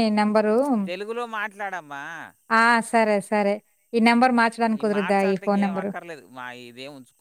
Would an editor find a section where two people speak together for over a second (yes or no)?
no